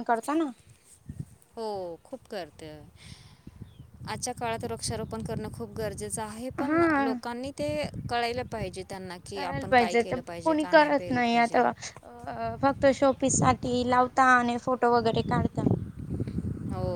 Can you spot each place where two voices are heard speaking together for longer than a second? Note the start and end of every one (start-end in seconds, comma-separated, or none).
9.3-11.6